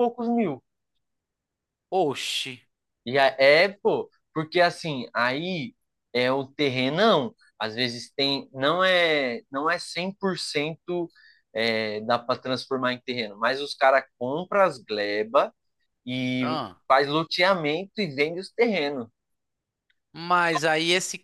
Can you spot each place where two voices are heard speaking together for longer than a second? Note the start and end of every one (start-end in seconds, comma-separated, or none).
none